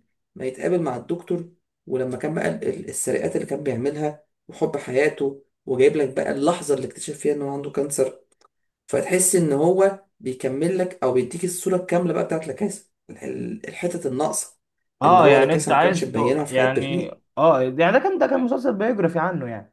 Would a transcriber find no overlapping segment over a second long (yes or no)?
no